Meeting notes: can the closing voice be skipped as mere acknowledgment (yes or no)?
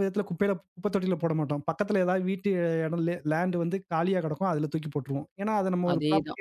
yes